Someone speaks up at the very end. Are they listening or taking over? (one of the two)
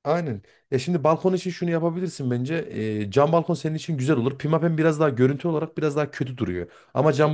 listening